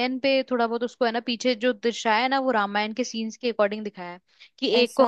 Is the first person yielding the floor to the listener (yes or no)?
no